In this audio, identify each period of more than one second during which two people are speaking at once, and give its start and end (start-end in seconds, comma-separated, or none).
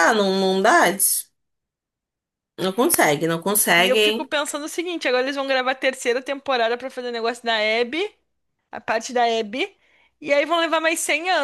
none